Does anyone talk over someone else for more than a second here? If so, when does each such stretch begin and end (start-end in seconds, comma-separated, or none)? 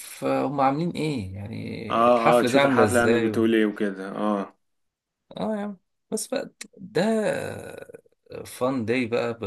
1.9-3.4